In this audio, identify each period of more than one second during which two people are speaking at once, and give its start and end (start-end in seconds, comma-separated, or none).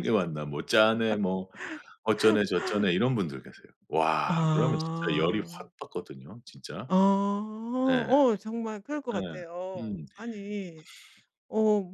4.2-5.7